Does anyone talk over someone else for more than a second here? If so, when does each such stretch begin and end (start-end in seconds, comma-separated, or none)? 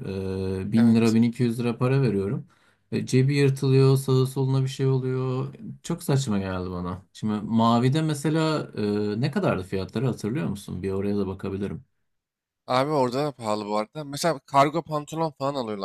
none